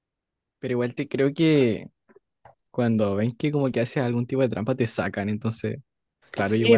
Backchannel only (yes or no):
no